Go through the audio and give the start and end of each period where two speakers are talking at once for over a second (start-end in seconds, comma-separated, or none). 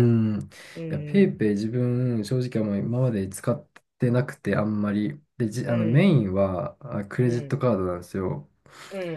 none